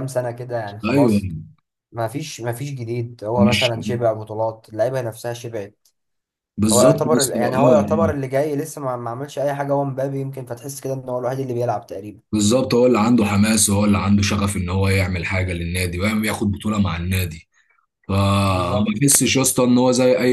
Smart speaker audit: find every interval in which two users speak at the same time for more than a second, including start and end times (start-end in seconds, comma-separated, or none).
6.7-8.2